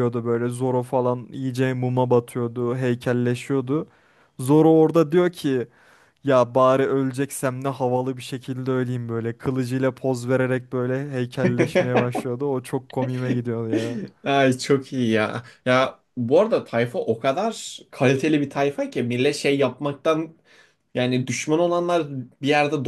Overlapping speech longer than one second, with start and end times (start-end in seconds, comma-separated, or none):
none